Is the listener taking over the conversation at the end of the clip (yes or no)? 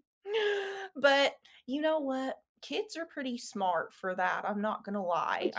yes